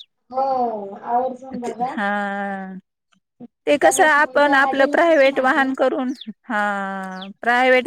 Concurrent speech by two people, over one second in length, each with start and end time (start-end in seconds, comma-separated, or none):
3.8-5.7